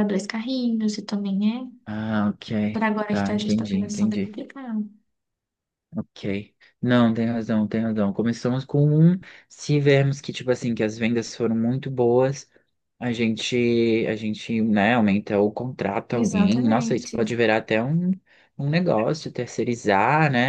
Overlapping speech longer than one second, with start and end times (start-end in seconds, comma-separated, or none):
2.7-4.3, 16.1-17.3